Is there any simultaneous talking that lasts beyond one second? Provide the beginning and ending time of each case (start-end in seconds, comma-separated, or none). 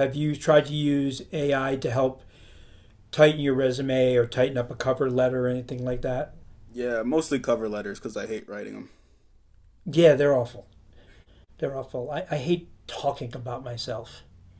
none